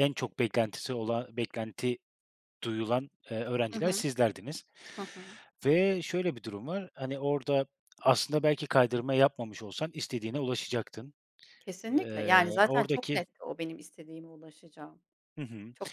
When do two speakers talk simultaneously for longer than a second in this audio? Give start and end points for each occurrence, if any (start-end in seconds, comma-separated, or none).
11.9-13.2